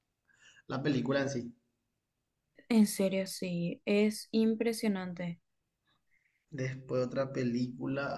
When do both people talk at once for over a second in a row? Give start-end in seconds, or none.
none